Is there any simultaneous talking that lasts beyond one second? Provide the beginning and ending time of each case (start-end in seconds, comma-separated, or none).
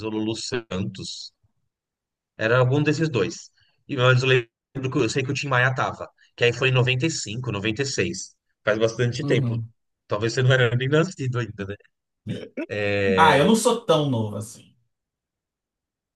none